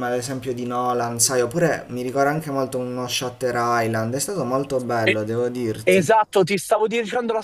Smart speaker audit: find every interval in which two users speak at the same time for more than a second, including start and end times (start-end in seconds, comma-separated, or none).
none